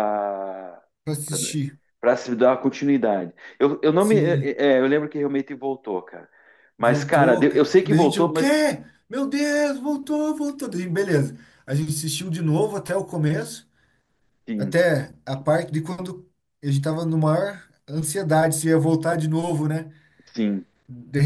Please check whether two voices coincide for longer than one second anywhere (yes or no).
yes